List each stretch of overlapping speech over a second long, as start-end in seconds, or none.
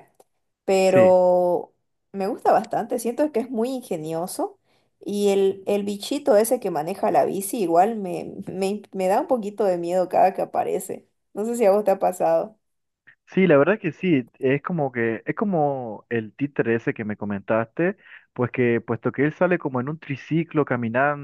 none